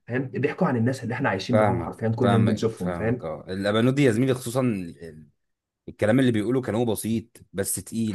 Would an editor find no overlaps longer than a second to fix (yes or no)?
no